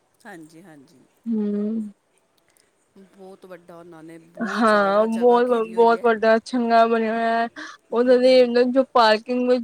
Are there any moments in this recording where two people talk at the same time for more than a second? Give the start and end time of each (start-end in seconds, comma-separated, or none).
4.5-6.0